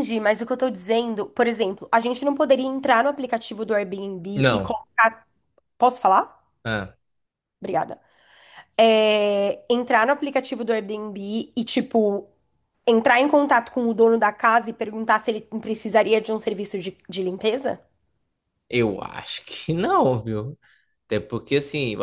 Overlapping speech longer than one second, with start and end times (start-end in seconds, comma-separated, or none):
none